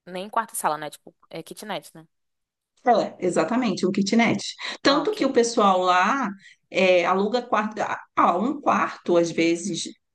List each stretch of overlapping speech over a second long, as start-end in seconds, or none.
none